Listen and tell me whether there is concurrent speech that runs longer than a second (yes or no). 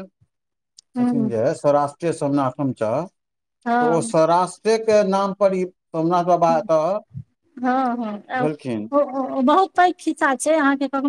no